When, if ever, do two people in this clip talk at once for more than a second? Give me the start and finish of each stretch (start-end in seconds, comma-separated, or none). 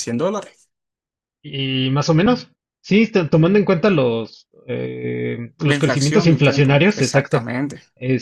5.6-7.5